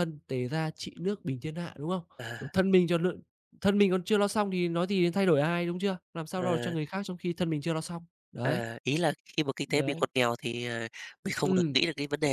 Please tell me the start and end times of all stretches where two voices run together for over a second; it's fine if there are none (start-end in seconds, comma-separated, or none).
none